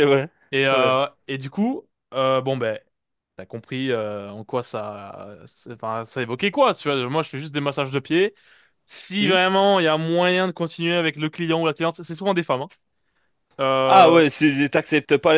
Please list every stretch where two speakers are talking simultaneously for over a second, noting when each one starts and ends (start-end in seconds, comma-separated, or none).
none